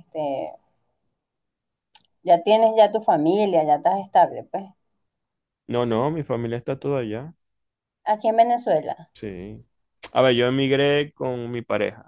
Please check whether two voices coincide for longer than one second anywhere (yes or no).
no